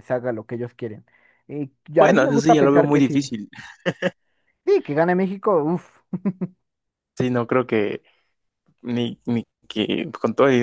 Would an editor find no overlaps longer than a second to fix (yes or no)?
no